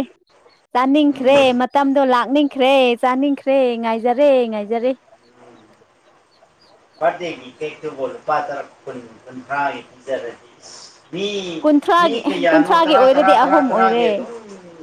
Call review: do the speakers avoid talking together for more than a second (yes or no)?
no